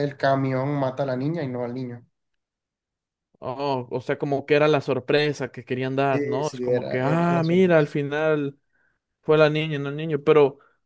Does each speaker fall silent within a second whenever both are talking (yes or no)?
no